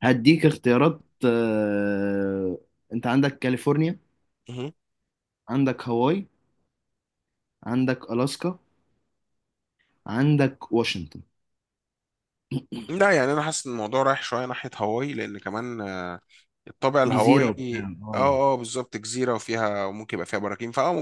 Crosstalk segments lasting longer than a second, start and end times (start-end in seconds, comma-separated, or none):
17.1-18.4